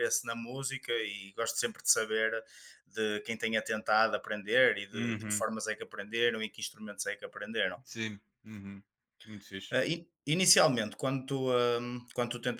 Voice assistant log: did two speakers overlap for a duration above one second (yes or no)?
no